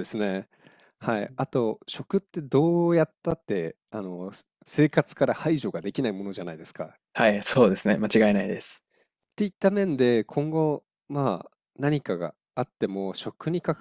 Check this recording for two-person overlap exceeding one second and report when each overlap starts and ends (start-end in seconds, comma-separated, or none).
none